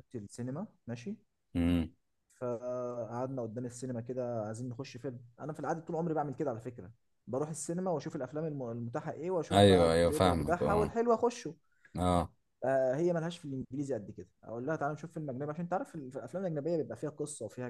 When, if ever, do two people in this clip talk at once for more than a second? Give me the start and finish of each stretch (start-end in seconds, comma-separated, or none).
9.5-11.0